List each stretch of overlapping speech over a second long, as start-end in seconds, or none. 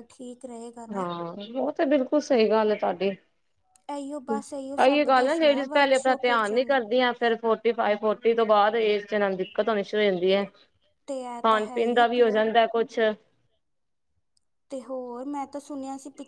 4.8-6.7, 10.9-12.4